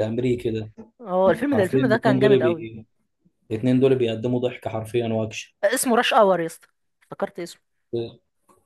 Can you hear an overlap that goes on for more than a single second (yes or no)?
yes